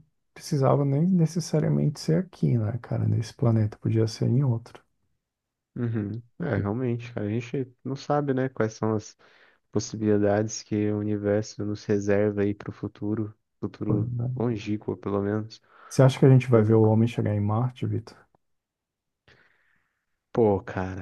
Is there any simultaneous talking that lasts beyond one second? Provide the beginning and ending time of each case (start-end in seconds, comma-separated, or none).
none